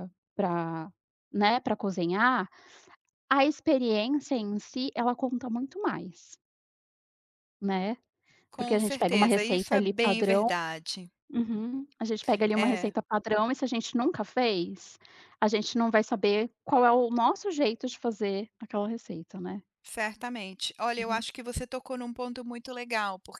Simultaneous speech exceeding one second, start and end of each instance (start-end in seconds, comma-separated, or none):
8.6-10.5